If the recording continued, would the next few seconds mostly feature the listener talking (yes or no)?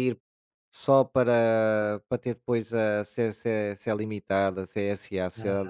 no